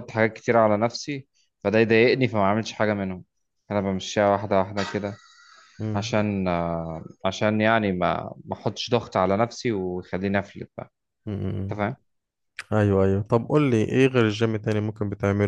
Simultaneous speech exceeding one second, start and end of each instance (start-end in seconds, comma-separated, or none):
none